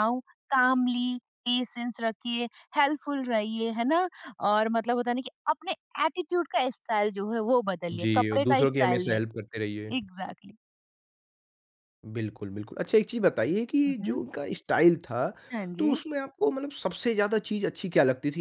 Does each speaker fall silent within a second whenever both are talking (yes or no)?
no